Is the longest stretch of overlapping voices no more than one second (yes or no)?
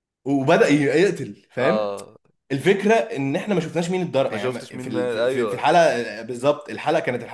no